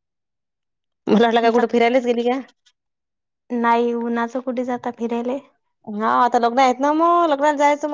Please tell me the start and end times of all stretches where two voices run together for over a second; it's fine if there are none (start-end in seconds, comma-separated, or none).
none